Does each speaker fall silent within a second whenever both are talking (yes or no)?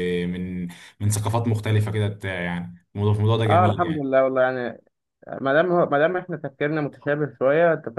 yes